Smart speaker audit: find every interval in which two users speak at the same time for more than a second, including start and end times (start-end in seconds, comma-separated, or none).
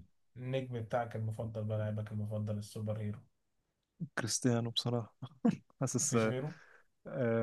none